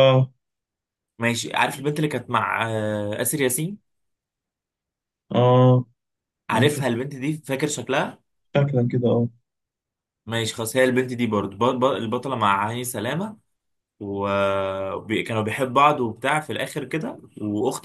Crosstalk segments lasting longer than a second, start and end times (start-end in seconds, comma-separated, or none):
none